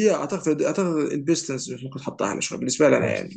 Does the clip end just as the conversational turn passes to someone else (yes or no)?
no